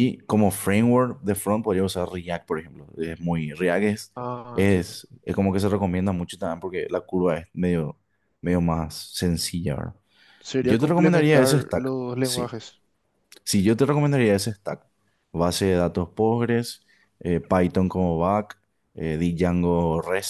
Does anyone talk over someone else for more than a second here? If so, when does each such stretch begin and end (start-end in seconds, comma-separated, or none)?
10.6-12.5